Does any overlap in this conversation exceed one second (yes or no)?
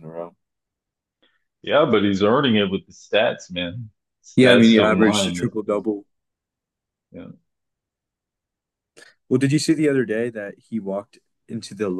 yes